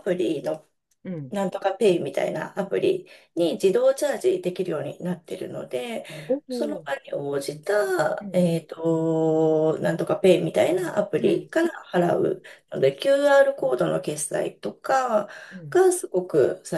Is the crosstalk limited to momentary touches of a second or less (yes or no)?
yes